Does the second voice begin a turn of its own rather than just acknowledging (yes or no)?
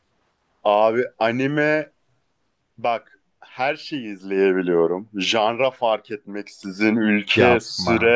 no